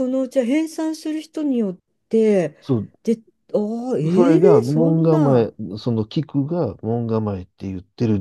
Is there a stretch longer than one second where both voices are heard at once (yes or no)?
yes